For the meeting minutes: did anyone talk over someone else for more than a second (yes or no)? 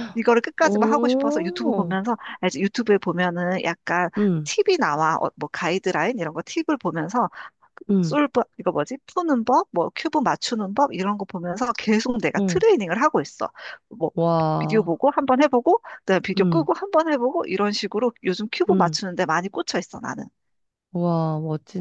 yes